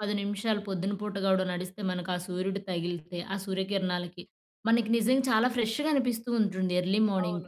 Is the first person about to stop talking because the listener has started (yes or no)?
yes